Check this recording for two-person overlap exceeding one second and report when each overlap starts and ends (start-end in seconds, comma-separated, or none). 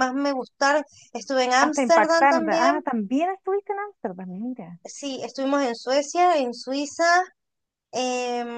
1.6-2.8